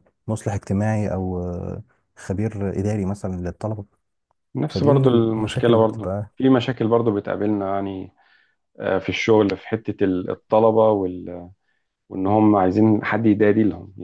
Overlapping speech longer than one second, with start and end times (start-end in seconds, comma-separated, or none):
4.7-6.3